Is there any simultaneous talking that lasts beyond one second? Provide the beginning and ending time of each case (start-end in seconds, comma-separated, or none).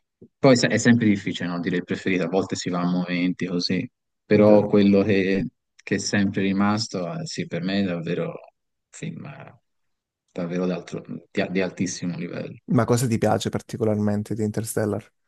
none